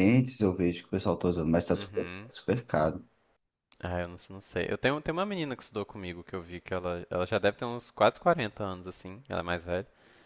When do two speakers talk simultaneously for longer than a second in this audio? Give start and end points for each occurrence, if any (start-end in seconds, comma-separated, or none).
none